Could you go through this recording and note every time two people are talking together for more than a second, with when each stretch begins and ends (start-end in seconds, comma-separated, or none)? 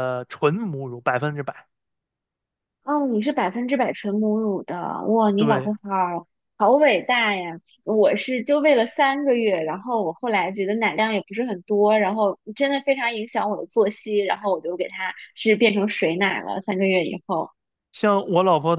none